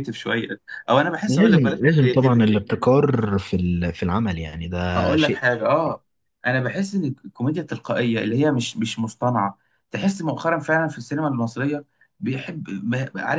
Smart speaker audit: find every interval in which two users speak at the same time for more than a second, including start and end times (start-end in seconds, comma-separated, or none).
1.2-2.5